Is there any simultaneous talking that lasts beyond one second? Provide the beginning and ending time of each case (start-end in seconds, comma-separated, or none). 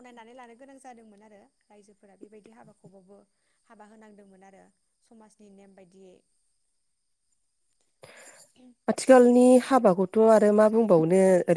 none